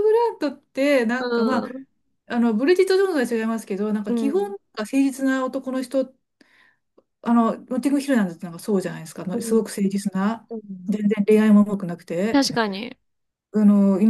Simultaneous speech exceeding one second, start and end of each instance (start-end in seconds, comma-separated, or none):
none